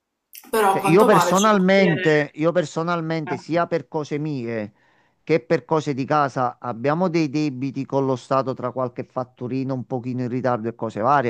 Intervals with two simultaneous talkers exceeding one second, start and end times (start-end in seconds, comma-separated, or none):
0.7-2.1